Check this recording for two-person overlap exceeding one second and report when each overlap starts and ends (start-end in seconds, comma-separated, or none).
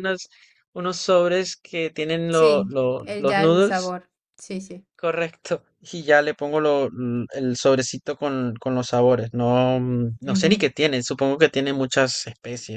2.3-4.0